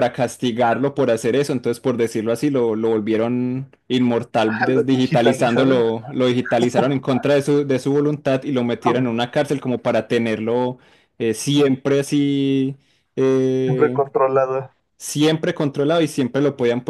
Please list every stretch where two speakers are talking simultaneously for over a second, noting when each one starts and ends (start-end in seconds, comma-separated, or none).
4.5-5.8